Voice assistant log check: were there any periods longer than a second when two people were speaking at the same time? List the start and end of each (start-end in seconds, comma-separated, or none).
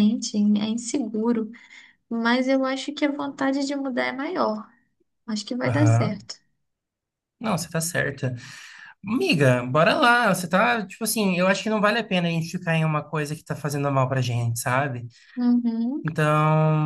none